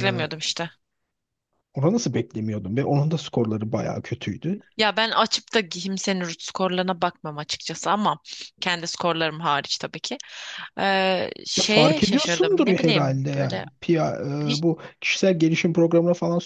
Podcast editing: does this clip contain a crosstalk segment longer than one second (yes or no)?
yes